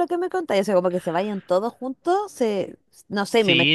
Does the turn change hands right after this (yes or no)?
yes